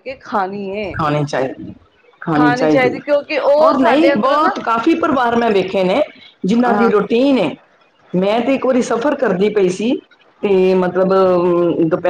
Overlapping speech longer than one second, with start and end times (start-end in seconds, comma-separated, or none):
3.0-4.6